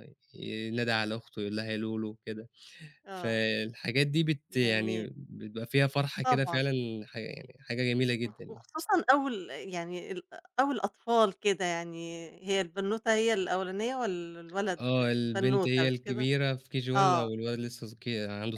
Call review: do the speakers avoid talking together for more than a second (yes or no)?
no